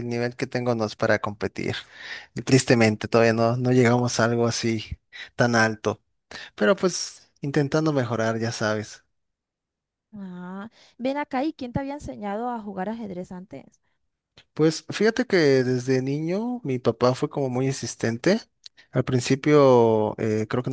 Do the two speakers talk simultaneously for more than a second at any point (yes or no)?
no